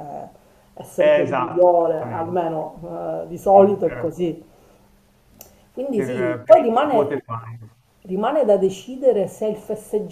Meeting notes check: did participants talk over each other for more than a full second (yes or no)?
yes